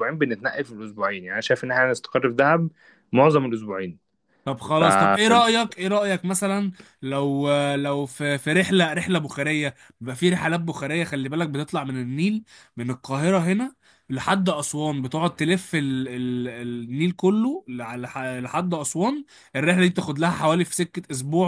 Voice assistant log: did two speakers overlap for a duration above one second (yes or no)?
no